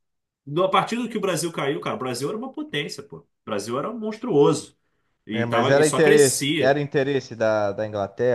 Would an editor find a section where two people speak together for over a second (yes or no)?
yes